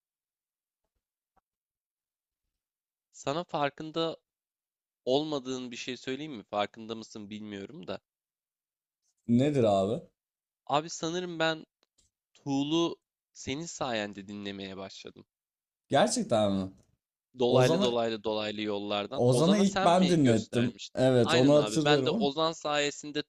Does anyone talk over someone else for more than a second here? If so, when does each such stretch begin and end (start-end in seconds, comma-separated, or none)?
19.1-22.3